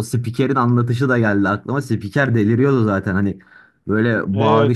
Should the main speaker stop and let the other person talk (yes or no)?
no